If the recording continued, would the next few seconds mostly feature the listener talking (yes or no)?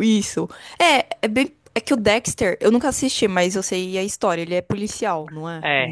yes